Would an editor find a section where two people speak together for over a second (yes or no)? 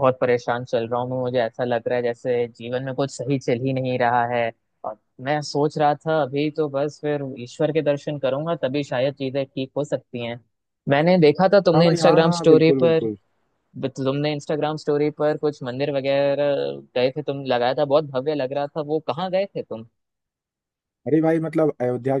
yes